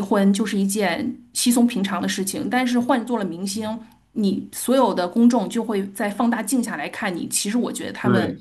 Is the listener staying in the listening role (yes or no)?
no